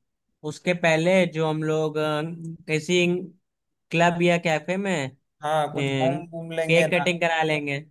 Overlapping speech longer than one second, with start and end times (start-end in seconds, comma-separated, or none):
5.8-7.0